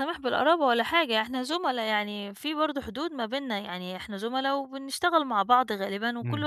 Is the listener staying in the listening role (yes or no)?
yes